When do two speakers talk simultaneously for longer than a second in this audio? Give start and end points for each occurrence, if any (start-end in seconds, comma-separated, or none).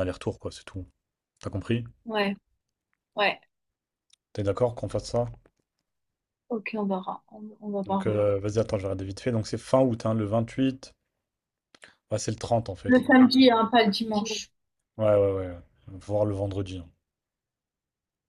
none